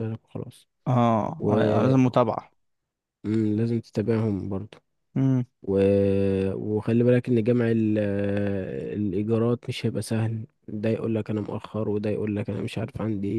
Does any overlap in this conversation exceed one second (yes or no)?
no